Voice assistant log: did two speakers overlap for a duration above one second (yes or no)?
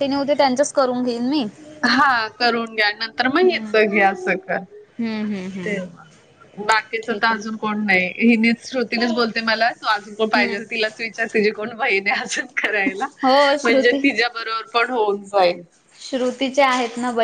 no